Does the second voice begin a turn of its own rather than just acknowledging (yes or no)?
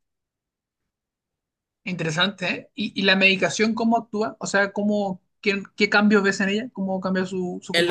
yes